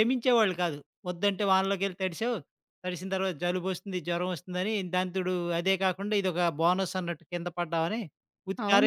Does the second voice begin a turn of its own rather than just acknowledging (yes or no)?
yes